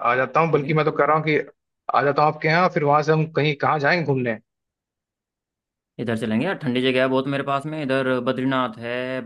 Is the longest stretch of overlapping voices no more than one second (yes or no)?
yes